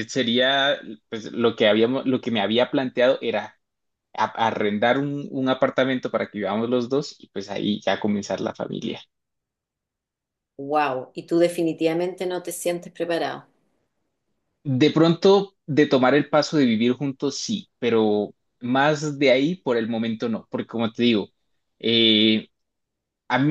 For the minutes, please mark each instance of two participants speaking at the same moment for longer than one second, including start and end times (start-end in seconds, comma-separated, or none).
none